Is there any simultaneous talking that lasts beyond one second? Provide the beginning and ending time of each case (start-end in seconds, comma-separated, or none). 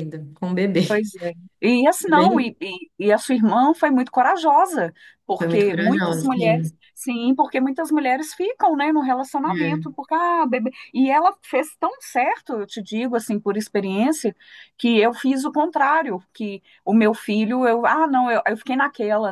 5.4-6.8